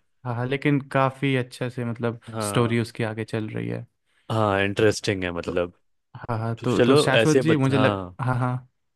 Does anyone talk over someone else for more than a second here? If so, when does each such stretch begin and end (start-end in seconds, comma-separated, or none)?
6.6-8.2